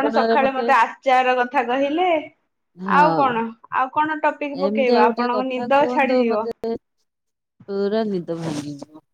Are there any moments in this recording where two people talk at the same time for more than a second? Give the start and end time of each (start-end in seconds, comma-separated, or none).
4.7-6.2